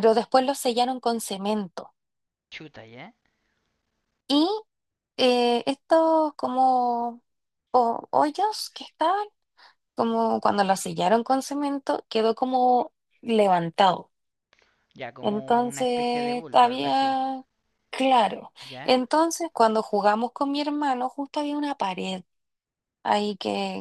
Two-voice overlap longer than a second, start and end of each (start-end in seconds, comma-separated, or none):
15.2-17.2